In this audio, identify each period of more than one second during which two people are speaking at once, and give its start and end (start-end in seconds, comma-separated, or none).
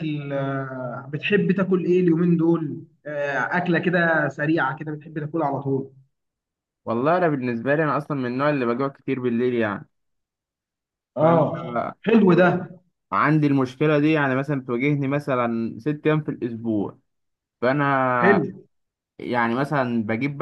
none